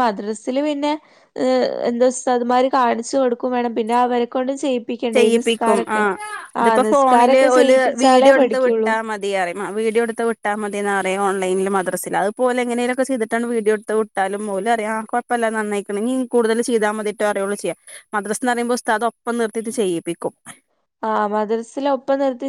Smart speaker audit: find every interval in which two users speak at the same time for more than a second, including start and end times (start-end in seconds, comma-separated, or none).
6.8-8.9